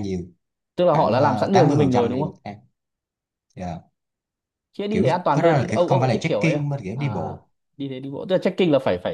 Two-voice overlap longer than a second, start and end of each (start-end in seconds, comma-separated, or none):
0.9-2.4, 4.9-7.0